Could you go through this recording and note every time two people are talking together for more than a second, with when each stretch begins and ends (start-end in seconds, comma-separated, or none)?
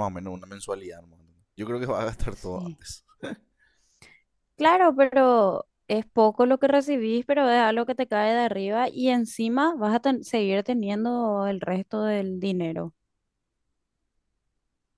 none